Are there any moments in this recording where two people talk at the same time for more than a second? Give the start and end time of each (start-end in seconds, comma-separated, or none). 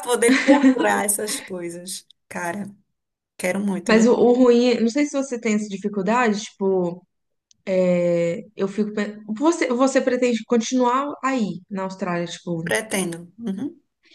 none